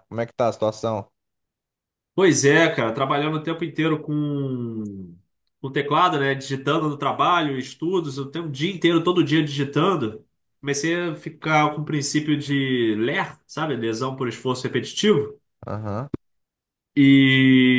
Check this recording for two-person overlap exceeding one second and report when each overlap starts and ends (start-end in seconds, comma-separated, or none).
none